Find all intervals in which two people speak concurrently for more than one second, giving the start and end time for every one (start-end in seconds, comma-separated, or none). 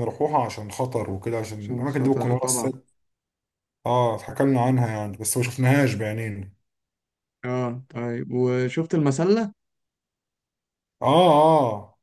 1.6-2.8